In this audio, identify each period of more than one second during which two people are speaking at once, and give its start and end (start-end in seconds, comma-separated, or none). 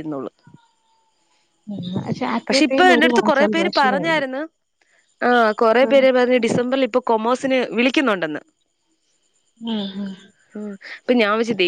2.5-4.2